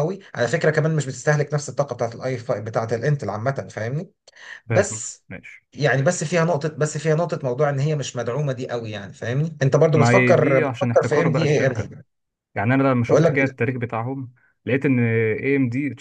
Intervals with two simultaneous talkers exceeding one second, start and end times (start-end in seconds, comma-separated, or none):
9.9-11.9